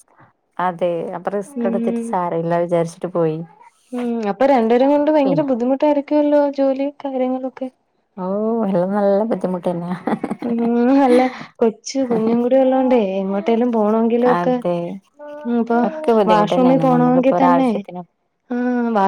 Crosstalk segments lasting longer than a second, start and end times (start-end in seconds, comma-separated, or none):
16.3-17.7